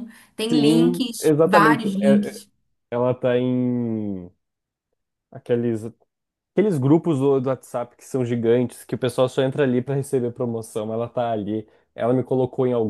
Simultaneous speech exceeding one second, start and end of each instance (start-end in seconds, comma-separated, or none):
0.5-2.4